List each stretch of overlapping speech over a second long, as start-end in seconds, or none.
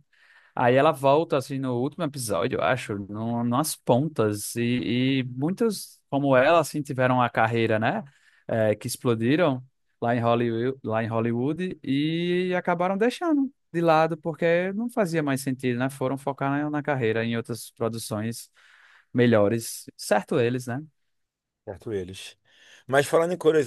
none